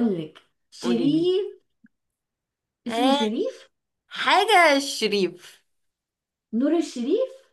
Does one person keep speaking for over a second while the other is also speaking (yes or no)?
no